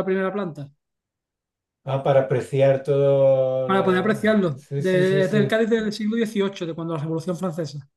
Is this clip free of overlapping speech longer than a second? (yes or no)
no